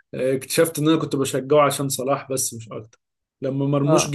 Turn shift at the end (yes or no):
no